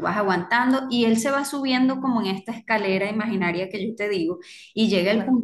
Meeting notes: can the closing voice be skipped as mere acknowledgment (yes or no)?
yes